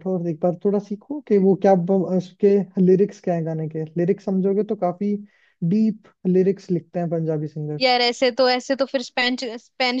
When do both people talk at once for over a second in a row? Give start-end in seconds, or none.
none